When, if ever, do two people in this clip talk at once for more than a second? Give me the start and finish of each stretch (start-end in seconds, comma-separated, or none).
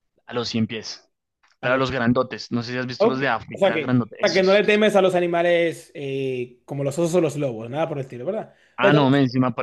3.0-5.0